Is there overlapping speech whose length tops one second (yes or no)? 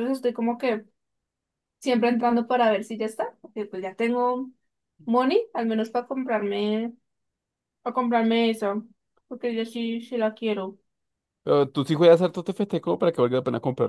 no